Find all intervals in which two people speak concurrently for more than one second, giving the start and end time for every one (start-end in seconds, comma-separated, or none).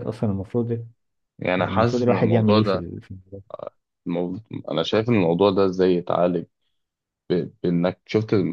1.6-2.9